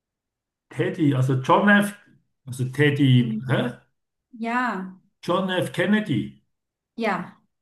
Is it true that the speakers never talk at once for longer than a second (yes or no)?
yes